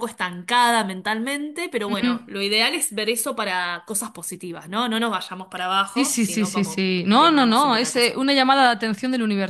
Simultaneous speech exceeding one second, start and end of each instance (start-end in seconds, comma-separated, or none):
5.9-8.2